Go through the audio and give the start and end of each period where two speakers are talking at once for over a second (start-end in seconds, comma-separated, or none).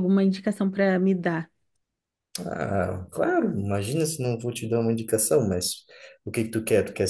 none